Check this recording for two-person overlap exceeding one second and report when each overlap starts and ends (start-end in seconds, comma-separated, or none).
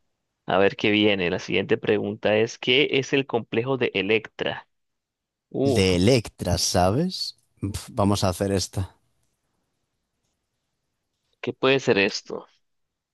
none